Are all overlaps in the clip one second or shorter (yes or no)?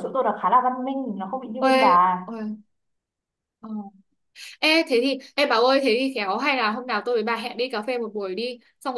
yes